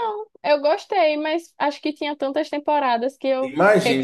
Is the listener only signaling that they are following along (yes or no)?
no